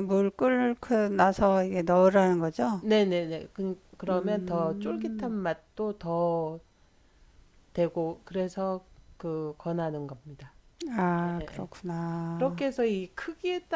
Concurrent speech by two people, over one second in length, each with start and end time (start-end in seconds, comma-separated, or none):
4.1-5.3